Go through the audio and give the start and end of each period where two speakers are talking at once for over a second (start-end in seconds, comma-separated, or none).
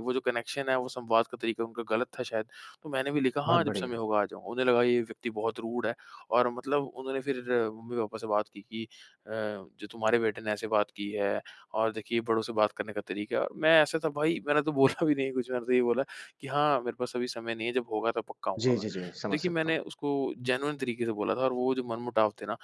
18.6-19.8